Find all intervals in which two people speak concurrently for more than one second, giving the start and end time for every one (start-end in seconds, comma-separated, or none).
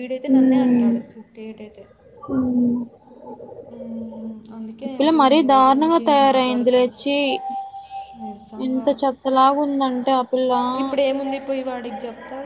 4.8-6.9